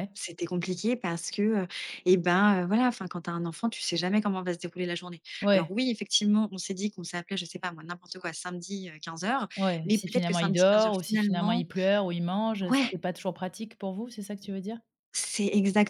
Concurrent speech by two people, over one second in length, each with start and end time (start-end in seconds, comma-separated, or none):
9.8-11.7